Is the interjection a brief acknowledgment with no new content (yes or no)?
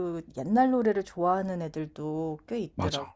no